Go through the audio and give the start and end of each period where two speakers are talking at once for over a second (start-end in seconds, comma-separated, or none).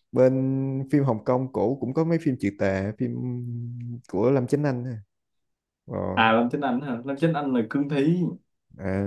none